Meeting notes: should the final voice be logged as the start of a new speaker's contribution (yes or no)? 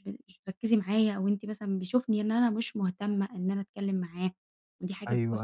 yes